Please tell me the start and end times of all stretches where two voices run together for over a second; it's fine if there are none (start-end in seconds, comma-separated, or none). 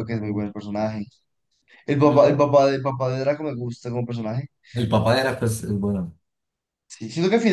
none